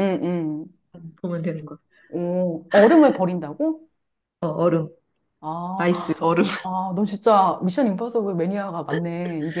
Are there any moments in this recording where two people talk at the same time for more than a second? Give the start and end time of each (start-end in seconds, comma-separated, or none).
none